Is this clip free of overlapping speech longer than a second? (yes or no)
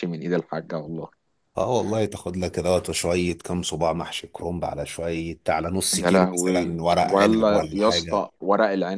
no